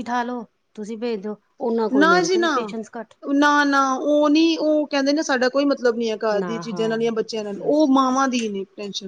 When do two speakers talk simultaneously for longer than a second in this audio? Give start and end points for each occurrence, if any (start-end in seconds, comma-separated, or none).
none